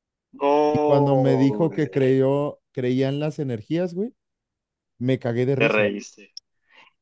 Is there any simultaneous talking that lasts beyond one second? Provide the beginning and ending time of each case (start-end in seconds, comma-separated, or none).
0.7-2.1